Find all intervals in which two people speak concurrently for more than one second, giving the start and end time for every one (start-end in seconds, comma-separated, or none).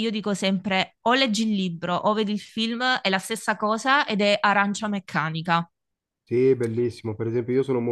none